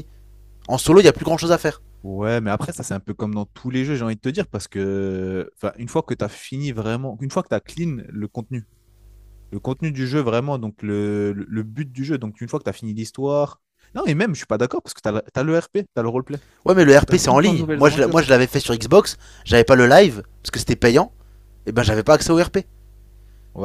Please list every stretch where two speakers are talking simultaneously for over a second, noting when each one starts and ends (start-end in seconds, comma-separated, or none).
17.0-18.2